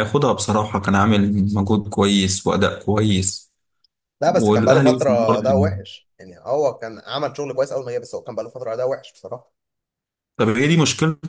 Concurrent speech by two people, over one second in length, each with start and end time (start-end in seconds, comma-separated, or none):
4.3-5.7